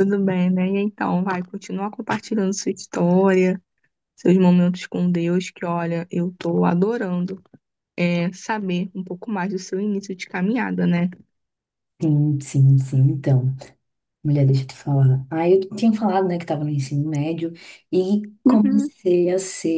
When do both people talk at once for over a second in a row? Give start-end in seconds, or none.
none